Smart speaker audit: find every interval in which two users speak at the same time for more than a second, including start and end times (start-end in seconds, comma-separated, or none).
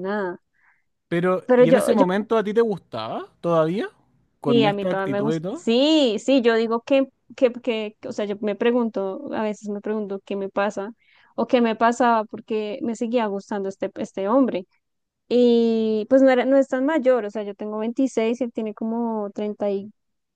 4.5-5.7